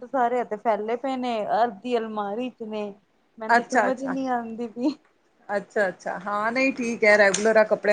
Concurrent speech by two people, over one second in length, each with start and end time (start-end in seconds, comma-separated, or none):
none